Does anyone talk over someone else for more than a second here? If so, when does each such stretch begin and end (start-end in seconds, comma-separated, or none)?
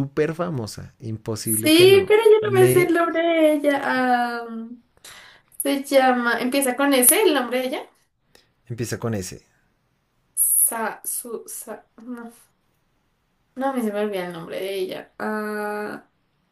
1.4-3.0